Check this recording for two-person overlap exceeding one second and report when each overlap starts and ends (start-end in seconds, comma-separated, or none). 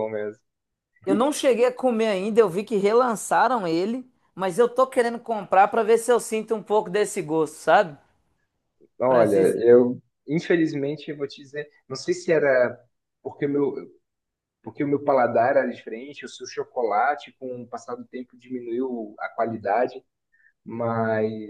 none